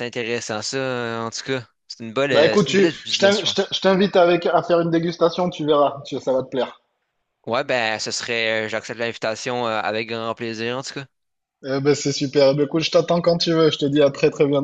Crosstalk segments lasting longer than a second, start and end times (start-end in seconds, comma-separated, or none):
2.3-3.7